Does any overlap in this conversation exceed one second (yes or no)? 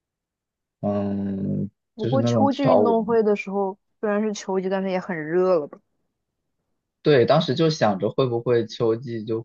yes